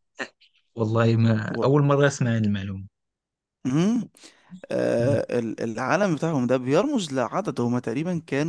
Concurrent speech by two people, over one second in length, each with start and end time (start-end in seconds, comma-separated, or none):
none